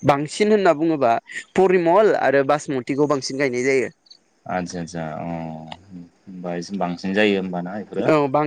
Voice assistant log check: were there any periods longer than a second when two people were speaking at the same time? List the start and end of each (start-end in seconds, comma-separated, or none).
none